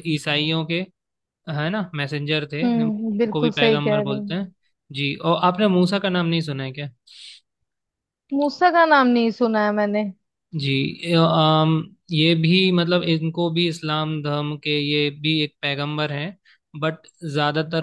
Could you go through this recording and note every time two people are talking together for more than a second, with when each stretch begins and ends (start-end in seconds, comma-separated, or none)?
2.6-4.4